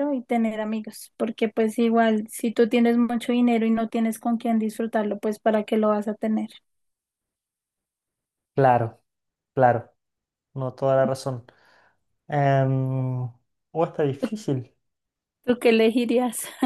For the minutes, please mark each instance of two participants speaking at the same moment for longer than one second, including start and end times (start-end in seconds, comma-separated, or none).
none